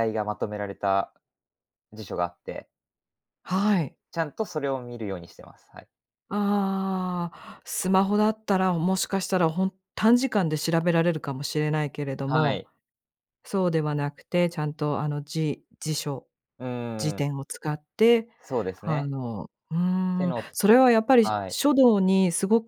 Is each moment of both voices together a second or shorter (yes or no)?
yes